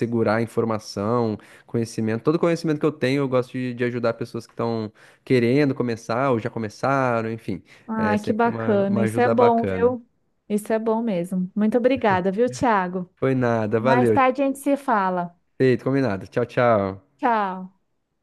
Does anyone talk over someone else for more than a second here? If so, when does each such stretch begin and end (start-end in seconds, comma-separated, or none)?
8.0-9.9